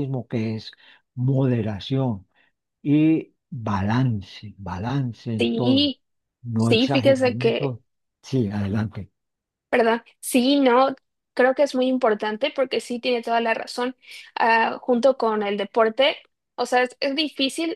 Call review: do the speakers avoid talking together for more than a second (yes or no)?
no